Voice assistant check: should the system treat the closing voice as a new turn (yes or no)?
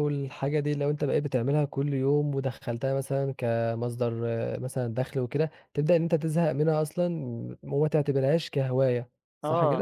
yes